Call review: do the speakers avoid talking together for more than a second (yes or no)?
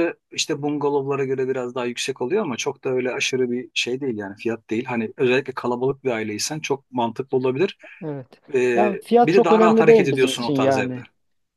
no